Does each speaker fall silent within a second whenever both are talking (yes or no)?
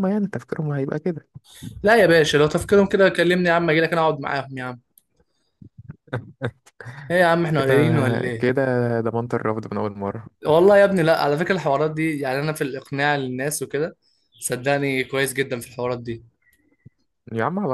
yes